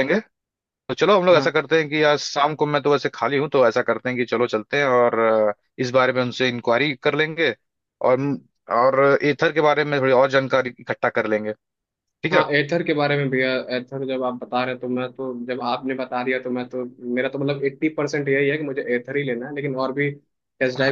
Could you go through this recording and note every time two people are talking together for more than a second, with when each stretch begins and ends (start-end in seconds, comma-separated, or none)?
none